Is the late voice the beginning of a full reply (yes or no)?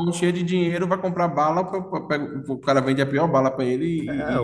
yes